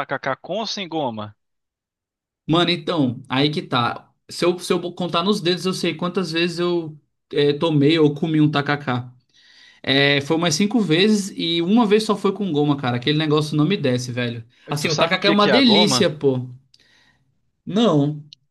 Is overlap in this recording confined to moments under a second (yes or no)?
no